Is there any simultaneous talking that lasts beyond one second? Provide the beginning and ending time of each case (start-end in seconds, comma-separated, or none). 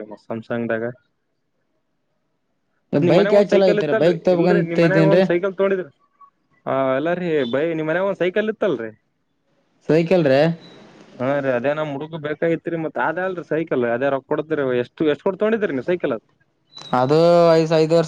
3.1-5.2